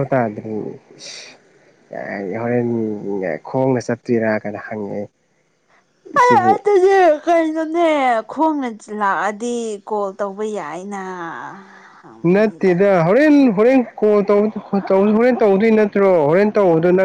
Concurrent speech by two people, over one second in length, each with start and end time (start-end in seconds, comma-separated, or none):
none